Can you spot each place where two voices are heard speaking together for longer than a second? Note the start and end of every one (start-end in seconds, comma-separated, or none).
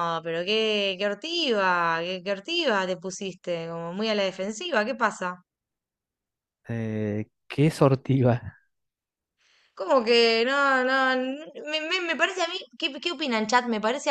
none